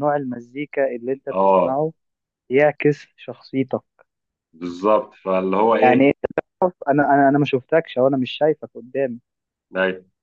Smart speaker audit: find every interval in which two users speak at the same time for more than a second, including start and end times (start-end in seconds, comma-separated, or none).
none